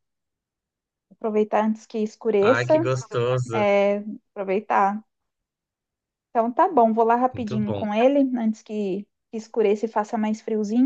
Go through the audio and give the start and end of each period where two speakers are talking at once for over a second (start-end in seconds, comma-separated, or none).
none